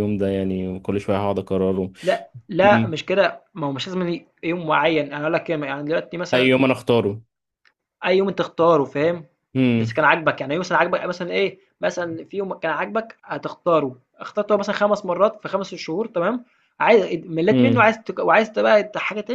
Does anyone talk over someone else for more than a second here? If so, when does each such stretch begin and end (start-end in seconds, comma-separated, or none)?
none